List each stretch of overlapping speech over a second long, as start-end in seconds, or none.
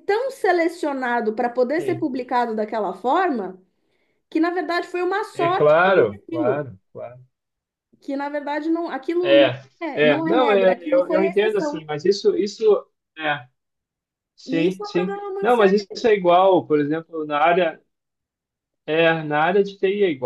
5.3-6.7, 9.2-11.8, 14.4-15.8